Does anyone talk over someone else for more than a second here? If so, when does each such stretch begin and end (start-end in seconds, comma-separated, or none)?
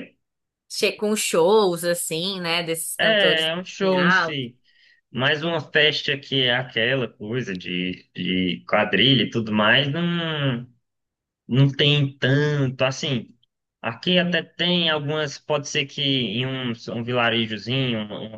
3.0-4.4